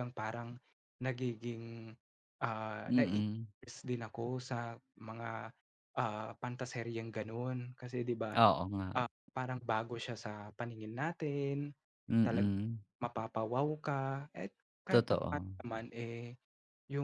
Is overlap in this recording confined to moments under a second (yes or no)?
yes